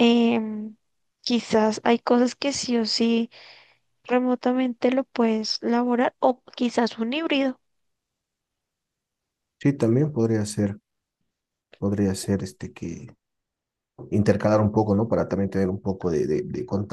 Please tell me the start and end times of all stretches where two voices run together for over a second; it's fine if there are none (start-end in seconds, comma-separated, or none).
none